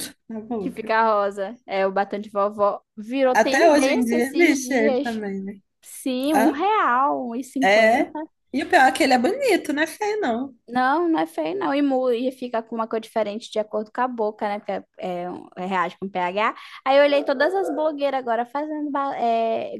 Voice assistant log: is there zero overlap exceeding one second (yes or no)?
no